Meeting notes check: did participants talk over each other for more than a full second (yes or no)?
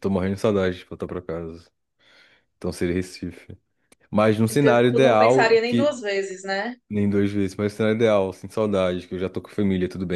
yes